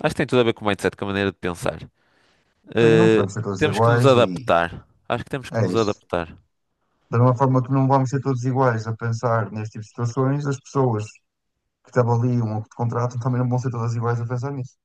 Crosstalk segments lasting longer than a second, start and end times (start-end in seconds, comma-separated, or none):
2.8-4.4